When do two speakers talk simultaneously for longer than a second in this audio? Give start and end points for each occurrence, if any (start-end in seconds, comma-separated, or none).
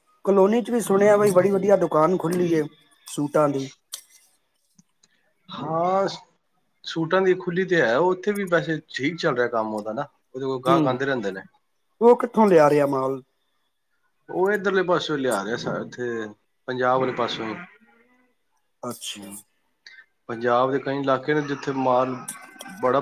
none